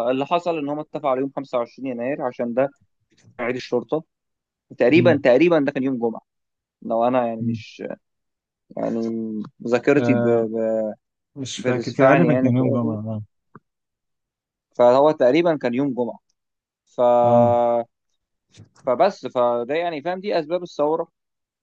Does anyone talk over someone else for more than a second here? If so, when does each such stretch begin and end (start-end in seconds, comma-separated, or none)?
11.6-13.0